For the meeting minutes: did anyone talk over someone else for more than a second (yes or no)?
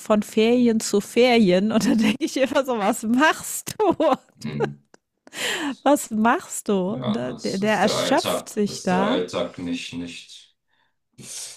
yes